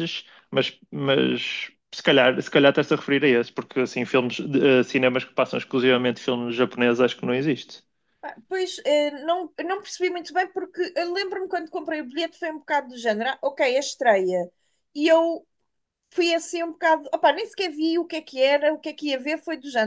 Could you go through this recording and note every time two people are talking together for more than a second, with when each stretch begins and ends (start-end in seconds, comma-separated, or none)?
none